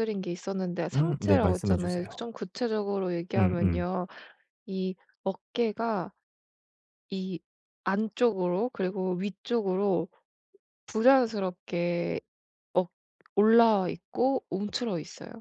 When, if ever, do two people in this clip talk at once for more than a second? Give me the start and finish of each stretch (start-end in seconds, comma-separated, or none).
0.9-2.2